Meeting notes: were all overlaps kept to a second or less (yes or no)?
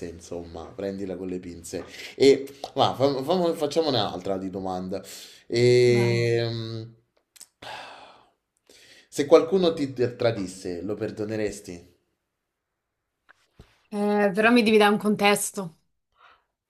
yes